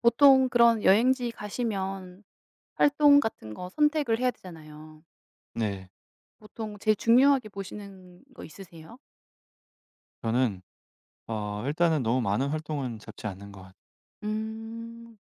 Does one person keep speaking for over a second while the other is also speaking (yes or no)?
no